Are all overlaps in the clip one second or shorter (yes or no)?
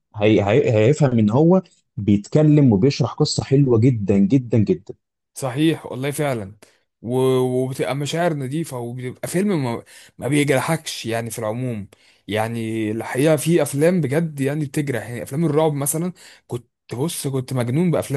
yes